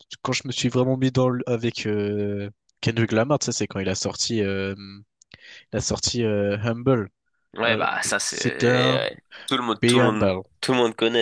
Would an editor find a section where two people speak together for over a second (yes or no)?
yes